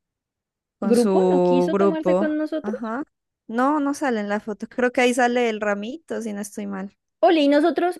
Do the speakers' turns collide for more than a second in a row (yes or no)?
yes